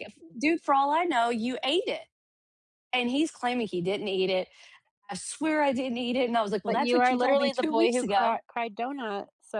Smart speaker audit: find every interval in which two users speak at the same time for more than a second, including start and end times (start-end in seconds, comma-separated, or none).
6.7-8.4